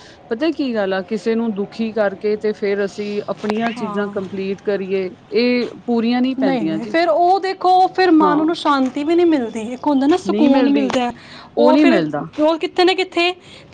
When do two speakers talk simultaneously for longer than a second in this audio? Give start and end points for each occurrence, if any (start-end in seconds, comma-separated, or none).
none